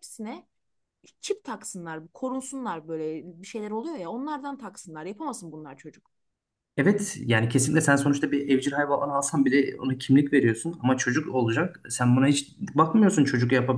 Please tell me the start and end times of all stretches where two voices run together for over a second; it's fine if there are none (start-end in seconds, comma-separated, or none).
none